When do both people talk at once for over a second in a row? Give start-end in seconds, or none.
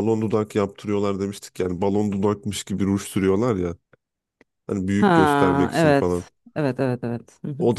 5.0-6.3